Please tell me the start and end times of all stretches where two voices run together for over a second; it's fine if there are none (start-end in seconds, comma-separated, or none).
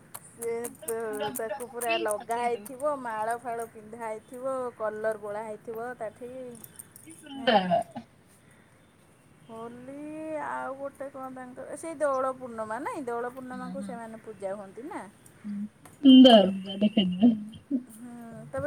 1.4-2.9